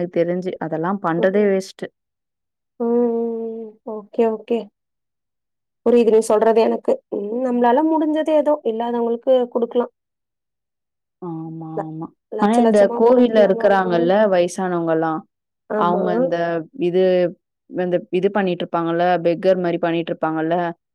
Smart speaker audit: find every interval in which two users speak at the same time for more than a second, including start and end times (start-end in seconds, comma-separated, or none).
12.4-14.0